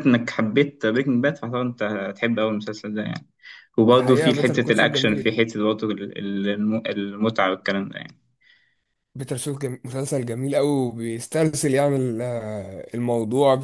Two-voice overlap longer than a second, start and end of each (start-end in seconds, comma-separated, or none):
3.9-5.4